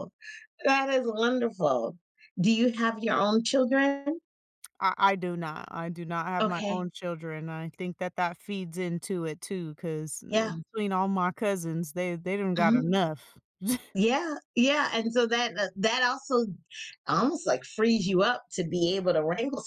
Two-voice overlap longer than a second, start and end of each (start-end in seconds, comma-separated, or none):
none